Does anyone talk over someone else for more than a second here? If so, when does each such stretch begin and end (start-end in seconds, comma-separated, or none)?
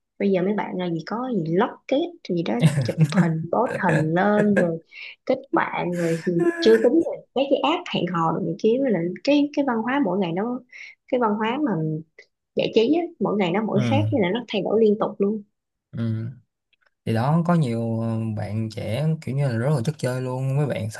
none